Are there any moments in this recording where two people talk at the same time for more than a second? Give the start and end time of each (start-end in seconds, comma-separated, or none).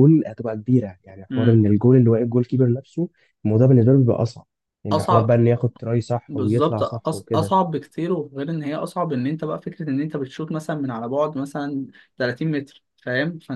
6.3-7.5